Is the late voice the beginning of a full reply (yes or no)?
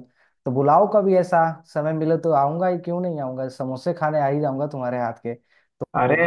no